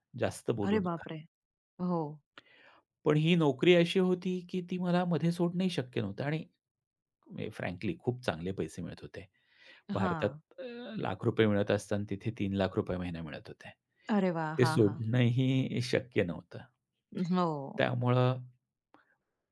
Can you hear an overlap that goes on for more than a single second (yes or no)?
no